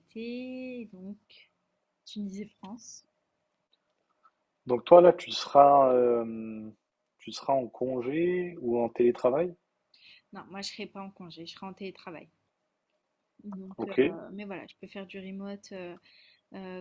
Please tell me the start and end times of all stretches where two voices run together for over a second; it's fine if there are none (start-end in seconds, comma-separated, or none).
none